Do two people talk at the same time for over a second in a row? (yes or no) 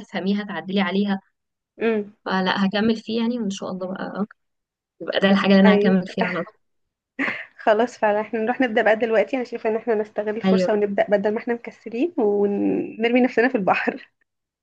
no